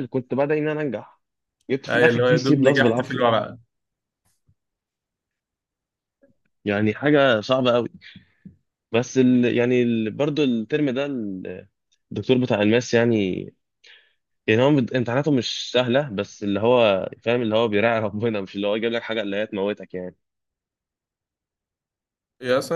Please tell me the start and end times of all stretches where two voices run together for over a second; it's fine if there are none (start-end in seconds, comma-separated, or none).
1.9-3.4